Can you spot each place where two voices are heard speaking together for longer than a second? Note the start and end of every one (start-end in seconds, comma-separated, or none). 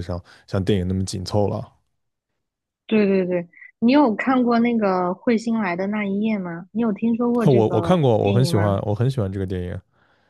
7.4-8.8